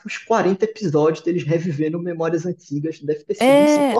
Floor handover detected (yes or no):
yes